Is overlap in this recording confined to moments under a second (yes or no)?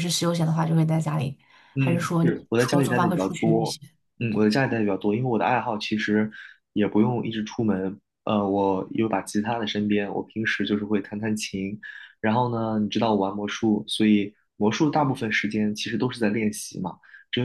no